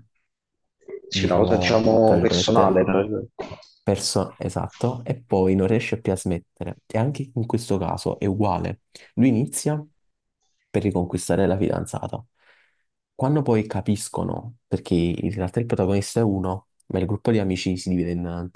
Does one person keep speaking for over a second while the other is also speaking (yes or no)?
yes